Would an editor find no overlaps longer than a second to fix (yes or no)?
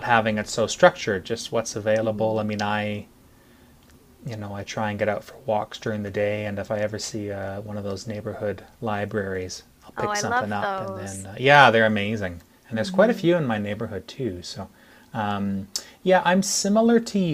no